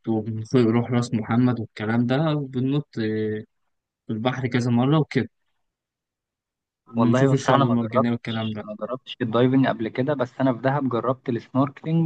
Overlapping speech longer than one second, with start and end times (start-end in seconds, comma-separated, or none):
7.0-8.6